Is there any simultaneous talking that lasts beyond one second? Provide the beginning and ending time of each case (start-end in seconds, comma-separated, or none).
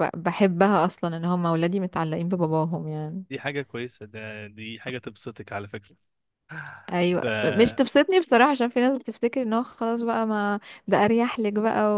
none